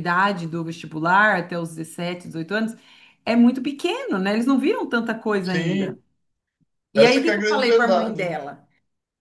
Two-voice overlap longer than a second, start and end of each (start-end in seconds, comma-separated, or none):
7.0-8.3